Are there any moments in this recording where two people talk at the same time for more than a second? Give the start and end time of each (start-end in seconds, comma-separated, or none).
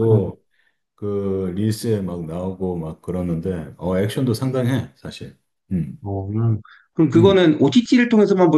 none